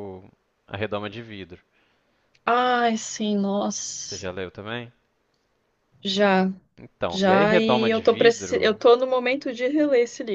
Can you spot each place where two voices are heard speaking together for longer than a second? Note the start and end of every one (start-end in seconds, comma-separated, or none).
7.1-8.8